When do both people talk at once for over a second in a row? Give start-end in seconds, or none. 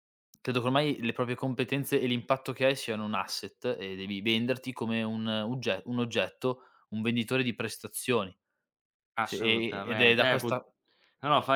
9.2-10.5